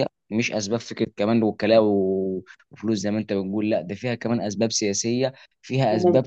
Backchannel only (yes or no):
yes